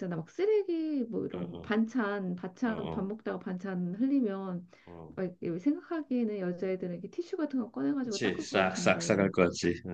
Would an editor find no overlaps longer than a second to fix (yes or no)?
no